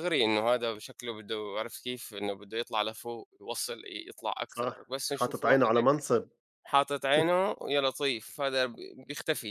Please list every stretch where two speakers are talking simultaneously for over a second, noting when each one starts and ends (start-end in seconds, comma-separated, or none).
4.5-5.9